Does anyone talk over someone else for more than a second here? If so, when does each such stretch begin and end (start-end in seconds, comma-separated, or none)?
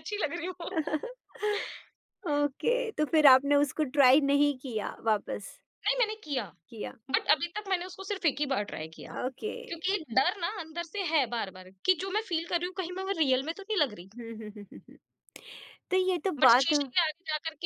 none